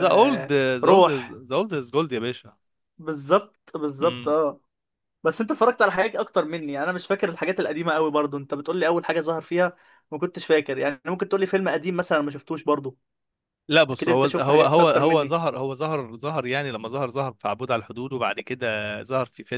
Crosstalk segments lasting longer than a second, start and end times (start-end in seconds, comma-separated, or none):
13.9-15.4